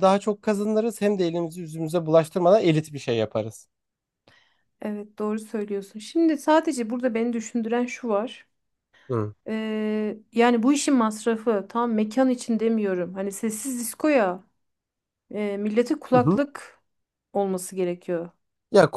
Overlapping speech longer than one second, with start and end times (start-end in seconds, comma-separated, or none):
none